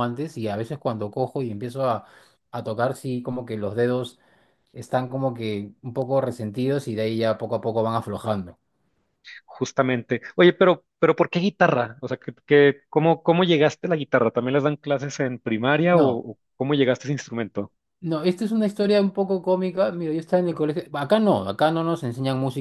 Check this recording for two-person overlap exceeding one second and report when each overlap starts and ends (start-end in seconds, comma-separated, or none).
none